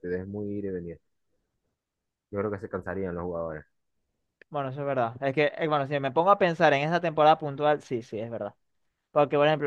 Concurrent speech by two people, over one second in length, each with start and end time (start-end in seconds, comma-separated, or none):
none